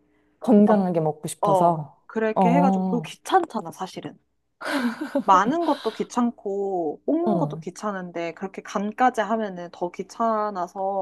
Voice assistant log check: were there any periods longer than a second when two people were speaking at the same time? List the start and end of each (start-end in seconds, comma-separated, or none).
1.4-3.1